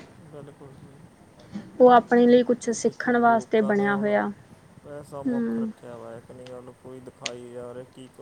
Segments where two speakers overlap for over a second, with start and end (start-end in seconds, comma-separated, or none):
2.6-4.2